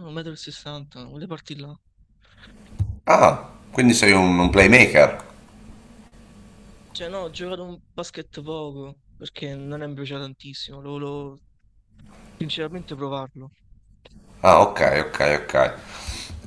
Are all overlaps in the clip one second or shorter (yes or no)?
yes